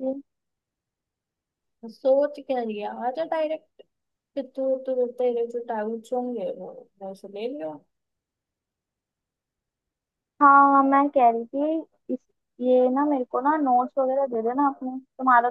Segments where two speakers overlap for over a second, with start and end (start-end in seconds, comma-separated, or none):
none